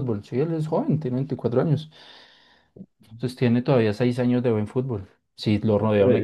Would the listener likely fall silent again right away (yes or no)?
no